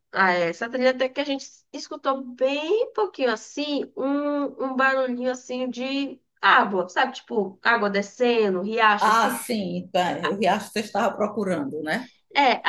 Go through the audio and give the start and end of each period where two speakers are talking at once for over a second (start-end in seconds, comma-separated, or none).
none